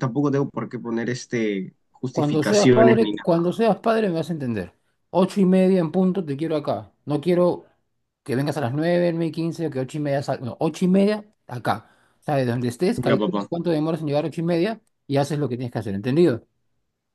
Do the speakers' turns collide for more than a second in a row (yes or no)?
yes